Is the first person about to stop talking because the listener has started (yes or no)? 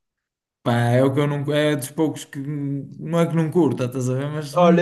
yes